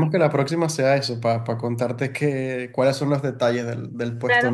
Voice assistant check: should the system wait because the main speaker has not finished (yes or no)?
no